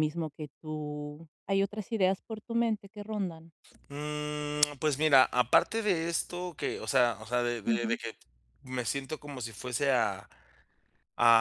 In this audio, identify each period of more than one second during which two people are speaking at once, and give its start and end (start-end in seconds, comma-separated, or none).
none